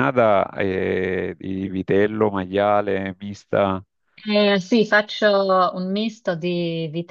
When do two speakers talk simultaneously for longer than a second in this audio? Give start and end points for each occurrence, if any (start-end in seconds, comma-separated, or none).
none